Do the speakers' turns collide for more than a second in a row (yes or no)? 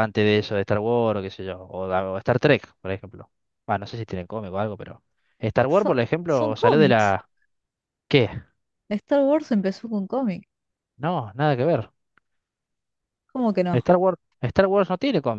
yes